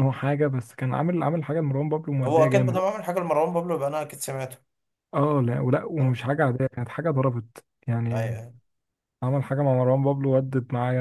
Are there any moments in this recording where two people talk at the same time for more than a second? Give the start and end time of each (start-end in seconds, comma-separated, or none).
none